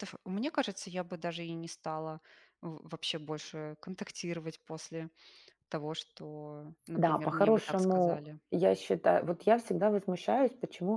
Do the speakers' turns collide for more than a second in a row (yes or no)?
yes